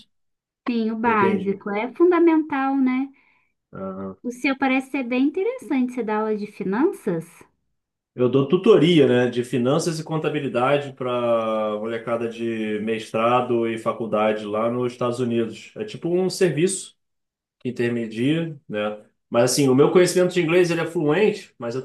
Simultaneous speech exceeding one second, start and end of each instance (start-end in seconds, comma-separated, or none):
none